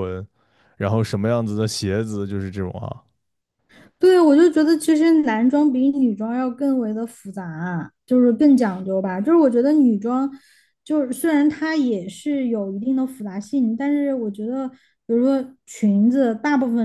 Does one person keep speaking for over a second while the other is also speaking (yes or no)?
no